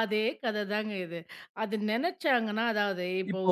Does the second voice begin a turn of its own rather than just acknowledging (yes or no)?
yes